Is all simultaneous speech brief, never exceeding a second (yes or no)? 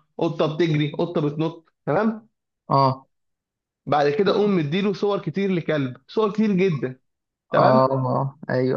yes